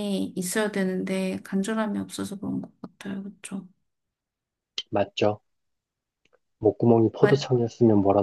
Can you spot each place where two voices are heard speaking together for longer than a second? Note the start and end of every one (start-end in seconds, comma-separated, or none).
none